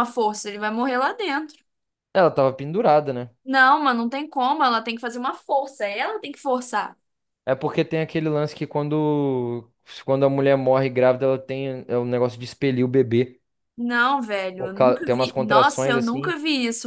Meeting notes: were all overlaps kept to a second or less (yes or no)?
no